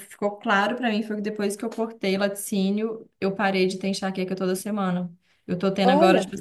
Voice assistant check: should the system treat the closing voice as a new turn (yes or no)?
no